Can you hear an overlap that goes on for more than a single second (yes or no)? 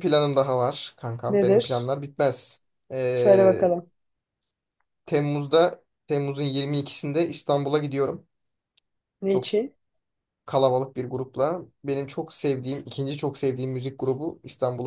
no